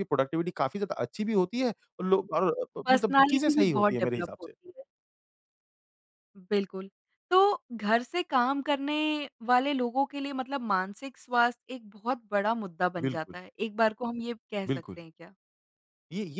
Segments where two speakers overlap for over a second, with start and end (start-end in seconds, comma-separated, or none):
2.9-4.5